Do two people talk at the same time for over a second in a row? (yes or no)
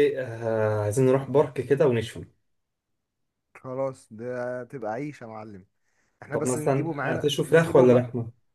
yes